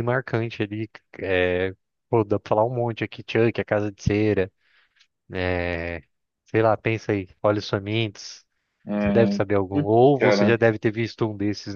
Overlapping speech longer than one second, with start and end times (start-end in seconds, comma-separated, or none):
9.0-10.6